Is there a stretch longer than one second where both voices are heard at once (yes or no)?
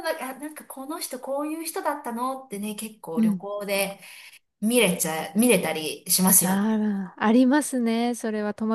no